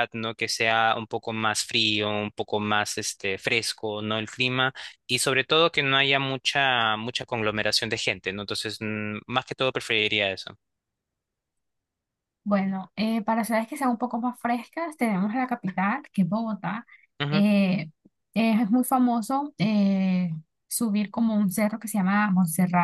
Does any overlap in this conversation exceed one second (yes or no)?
no